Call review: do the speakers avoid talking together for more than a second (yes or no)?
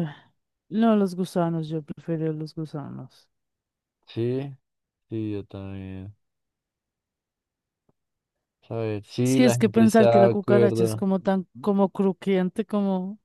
no